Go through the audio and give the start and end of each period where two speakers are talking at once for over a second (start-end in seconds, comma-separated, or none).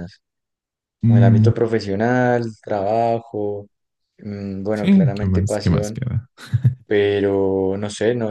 4.7-6.0